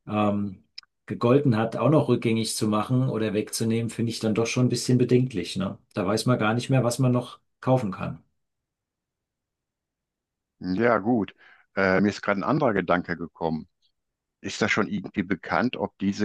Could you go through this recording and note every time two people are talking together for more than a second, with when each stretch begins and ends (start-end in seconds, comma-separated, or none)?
none